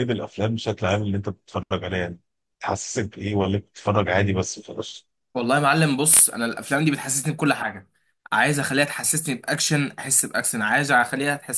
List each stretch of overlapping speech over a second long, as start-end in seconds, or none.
none